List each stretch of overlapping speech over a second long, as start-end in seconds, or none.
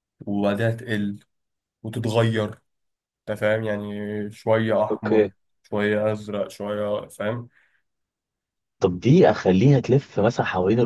none